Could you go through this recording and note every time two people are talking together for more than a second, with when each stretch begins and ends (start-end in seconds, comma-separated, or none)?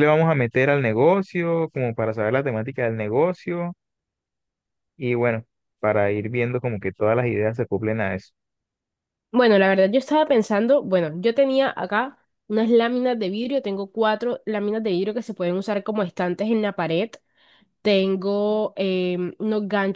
none